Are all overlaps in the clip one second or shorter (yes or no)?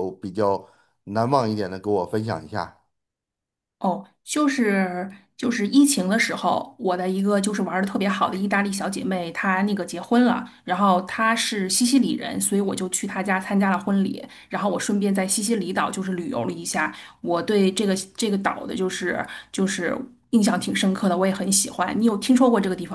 yes